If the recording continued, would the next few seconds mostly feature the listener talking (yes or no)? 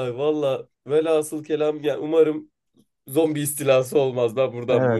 yes